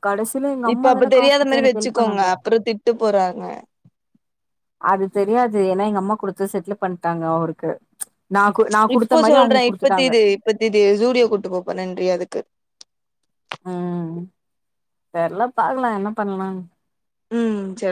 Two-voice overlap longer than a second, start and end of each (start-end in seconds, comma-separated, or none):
0.7-2.2